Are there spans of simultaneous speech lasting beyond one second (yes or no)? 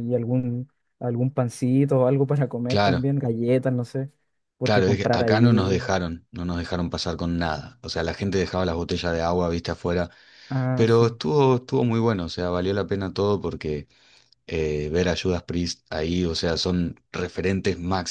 yes